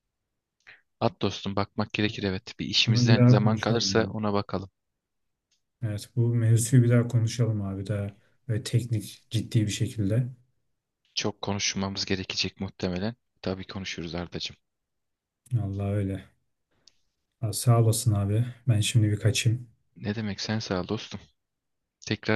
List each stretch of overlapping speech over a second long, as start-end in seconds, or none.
2.9-4.2